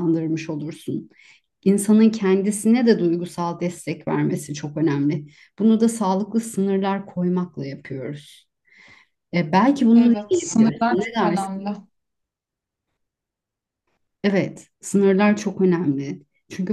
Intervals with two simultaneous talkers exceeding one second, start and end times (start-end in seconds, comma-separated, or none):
9.9-11.6